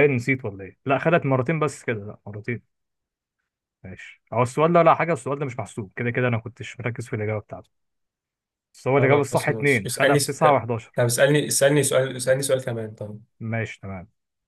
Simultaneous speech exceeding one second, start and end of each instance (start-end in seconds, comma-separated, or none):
9.0-10.8